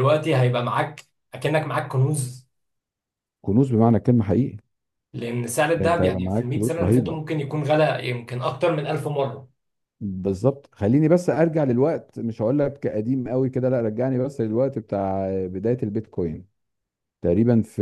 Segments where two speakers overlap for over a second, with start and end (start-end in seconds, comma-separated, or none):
5.8-7.2